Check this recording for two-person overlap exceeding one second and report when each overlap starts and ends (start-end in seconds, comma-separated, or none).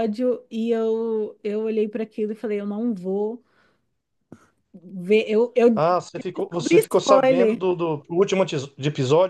5.7-7.6